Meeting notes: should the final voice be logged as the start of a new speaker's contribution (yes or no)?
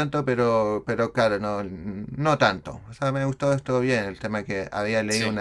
no